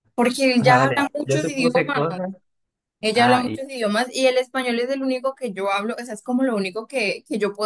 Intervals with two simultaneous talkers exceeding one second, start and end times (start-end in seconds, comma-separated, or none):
0.6-2.2